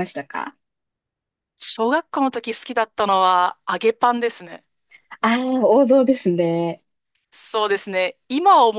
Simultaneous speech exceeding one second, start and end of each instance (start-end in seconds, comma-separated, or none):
none